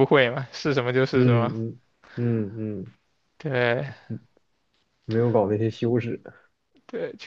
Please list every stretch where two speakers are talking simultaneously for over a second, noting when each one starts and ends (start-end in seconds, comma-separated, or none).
none